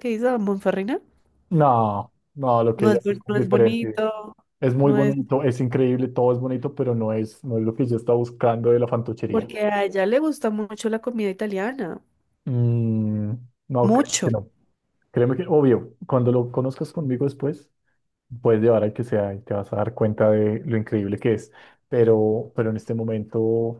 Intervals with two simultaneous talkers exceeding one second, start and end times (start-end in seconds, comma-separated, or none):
2.8-4.1